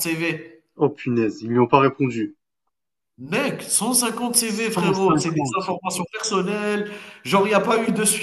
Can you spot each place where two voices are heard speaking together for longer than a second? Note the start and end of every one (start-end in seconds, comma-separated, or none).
4.4-5.7